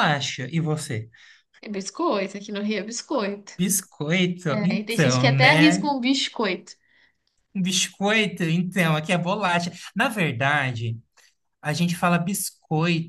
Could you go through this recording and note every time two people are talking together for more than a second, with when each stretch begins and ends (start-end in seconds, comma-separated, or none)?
4.5-5.8